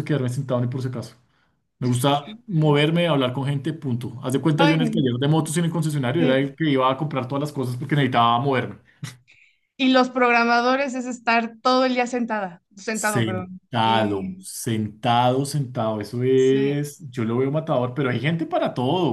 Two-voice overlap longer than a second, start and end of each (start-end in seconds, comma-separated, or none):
12.9-14.4